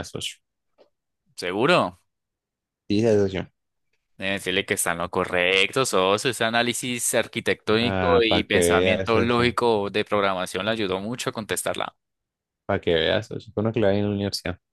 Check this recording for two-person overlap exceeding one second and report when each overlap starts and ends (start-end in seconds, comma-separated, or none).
7.8-9.5